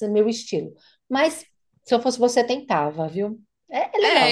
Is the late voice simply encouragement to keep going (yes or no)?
no